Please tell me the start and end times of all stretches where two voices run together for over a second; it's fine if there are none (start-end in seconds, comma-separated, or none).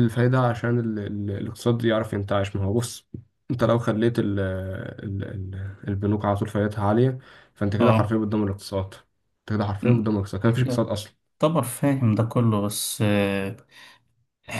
none